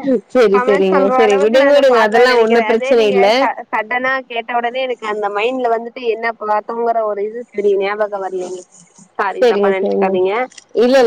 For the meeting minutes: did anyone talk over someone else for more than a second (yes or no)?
yes